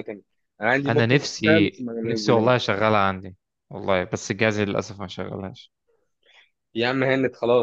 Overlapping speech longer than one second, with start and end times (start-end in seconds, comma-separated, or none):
0.9-2.5